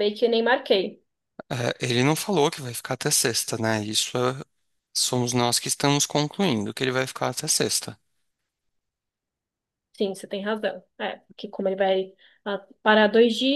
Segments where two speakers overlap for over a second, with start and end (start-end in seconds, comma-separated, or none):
none